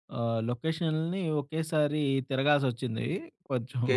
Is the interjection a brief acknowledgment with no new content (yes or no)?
no